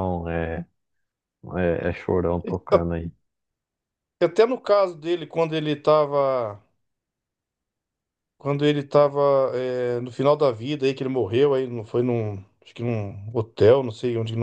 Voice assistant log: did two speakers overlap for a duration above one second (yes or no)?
no